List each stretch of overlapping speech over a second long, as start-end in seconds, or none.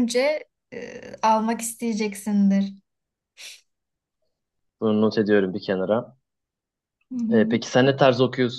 none